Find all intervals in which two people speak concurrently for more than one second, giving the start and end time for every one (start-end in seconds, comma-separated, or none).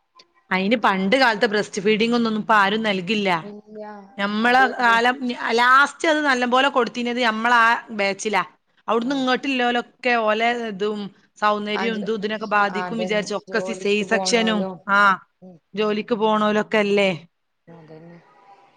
12.8-14.6